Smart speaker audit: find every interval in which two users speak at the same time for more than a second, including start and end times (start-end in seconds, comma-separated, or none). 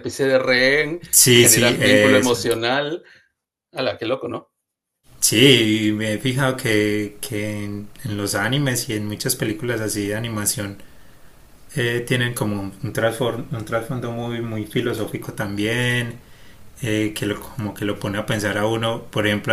1.1-2.4